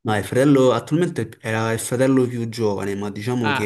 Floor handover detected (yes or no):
yes